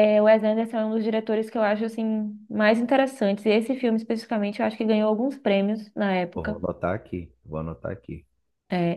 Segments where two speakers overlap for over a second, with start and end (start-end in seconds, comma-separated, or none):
none